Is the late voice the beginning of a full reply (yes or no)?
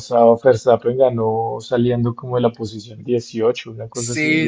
yes